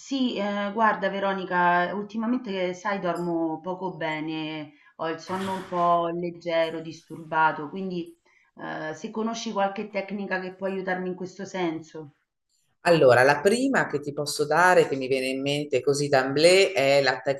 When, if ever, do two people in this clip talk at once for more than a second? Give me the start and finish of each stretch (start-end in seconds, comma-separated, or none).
none